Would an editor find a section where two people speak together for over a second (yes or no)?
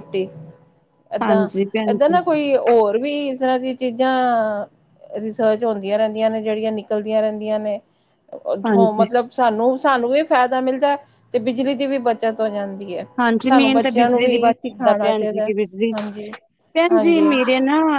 yes